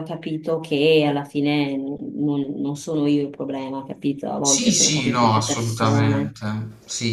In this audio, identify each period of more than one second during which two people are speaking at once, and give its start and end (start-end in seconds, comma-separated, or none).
4.4-6.4